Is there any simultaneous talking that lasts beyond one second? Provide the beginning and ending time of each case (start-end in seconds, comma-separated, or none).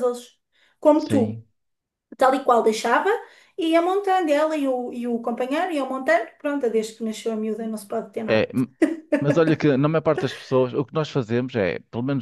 none